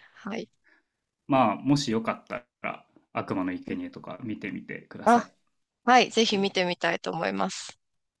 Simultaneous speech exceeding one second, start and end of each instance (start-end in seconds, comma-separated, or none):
none